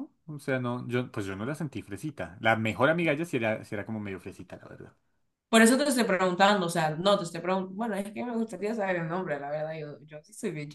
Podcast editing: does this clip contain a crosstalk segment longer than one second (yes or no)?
no